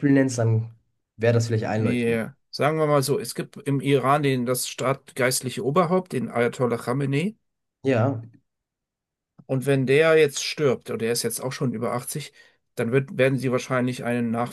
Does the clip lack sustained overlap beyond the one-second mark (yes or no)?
yes